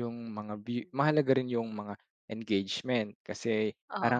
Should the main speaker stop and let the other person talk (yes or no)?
no